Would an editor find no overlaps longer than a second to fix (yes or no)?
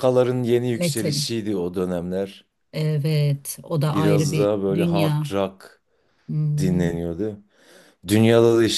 no